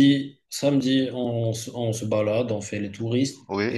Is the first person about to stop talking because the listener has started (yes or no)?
no